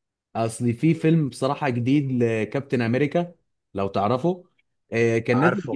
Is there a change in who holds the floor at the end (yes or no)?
no